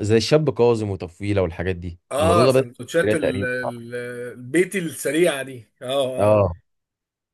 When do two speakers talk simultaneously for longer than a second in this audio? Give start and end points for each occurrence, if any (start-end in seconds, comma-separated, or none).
2.1-3.9